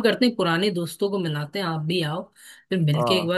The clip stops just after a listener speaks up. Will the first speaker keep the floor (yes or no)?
yes